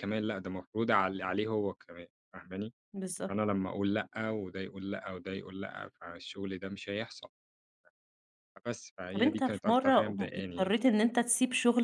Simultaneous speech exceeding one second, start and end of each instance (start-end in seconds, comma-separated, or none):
9.1-10.8